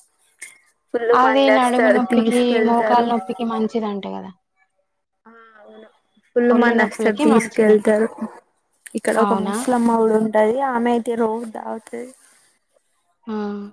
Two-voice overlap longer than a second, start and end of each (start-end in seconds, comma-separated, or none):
1.2-3.1, 6.5-7.9